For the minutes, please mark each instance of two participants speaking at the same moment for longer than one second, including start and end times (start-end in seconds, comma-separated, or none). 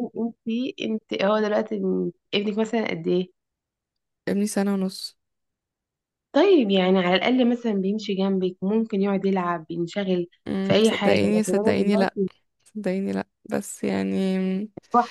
10.6-12.2